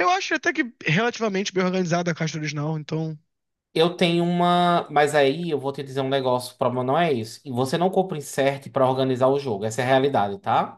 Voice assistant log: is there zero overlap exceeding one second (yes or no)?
yes